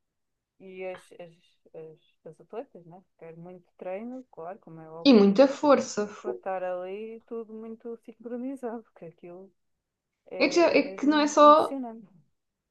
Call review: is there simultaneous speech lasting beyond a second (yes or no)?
yes